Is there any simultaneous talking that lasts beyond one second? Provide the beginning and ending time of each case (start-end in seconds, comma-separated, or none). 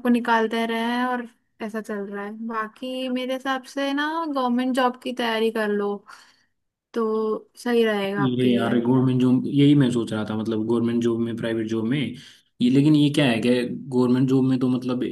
none